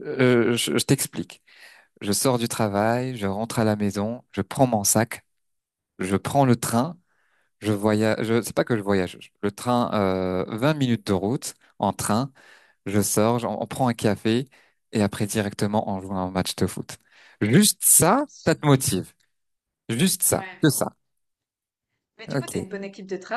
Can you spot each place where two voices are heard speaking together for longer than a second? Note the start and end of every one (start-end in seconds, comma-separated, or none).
none